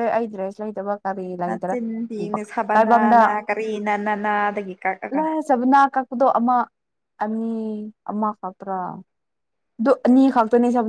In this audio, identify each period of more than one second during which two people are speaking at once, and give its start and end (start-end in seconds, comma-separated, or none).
1.5-3.2